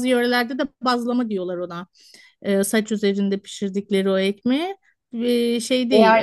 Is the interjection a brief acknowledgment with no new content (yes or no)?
no